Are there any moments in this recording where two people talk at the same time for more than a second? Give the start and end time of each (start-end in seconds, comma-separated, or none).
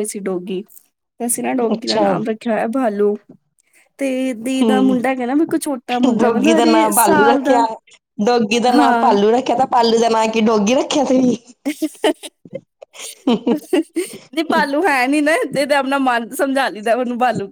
6.2-7.6